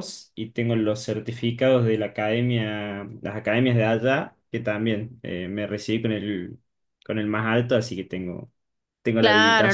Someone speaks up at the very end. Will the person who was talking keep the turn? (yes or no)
no